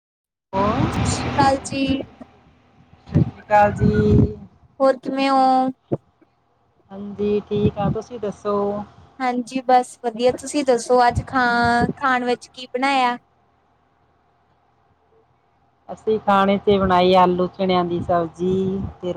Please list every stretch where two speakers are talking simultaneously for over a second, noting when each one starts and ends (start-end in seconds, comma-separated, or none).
none